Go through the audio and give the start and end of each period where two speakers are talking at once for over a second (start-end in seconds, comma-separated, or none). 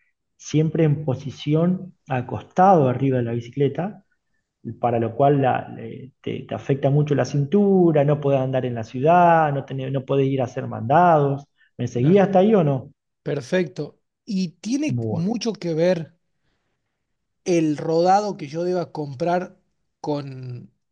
none